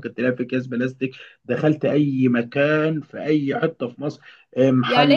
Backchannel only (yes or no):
no